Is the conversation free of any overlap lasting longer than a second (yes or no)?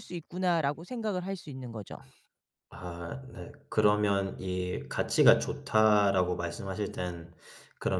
yes